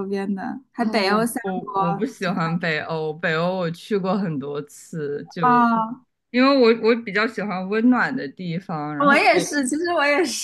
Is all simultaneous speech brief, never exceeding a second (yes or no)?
no